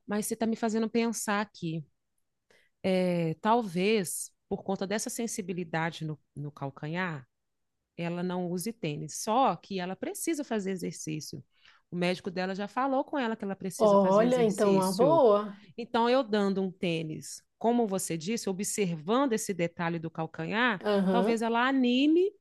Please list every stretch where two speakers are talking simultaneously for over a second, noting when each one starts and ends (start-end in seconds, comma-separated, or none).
13.8-15.2